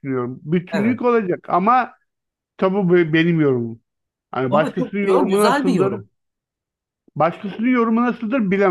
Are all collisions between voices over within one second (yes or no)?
no